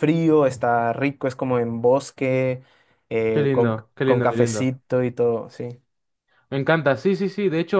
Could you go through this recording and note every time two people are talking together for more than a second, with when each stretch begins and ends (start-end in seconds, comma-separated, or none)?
3.3-4.7